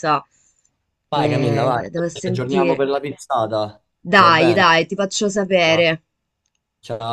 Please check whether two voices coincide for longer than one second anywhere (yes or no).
yes